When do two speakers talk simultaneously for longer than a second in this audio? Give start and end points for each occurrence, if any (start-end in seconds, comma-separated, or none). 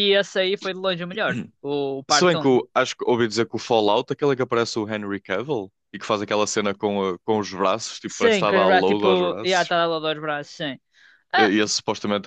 8.1-9.7